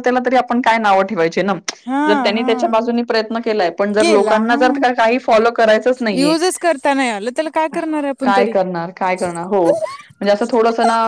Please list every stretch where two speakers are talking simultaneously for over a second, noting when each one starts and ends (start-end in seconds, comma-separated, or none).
none